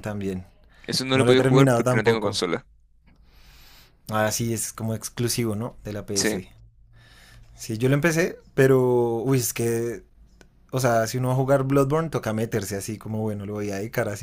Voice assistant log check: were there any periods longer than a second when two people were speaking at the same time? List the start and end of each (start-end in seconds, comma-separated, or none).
1.1-2.4